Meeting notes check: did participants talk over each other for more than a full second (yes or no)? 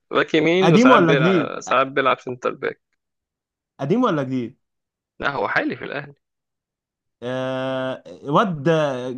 yes